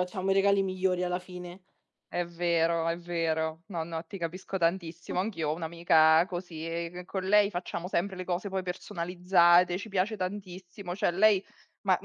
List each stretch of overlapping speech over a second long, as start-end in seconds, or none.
none